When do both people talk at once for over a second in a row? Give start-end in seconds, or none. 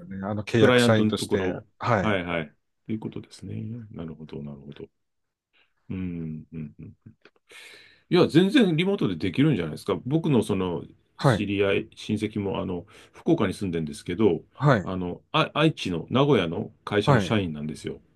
0.6-2.2